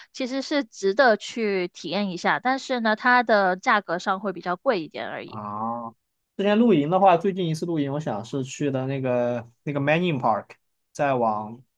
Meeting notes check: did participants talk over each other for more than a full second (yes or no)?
no